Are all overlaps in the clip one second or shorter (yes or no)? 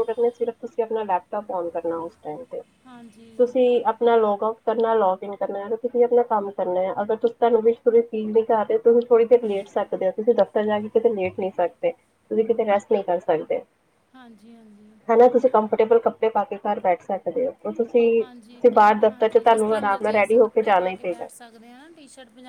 no